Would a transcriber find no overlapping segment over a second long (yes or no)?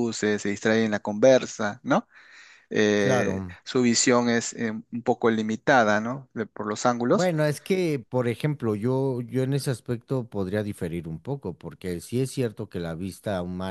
yes